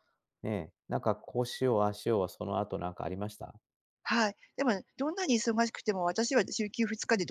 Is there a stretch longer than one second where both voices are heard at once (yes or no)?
no